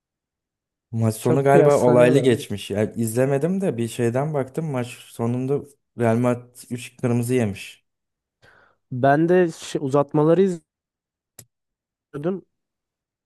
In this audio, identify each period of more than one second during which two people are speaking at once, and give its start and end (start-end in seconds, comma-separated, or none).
1.2-2.4